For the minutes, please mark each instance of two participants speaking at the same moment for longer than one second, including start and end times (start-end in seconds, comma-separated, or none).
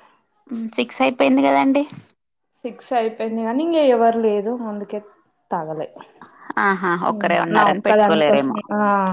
7.2-8.6